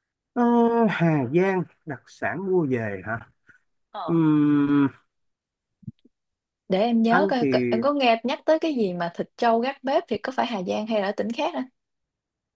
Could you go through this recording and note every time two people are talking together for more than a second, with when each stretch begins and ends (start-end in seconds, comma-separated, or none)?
none